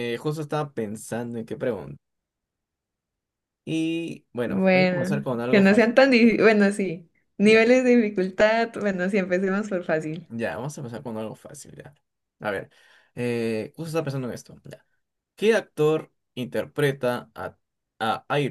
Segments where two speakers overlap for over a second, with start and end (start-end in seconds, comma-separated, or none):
4.4-6.0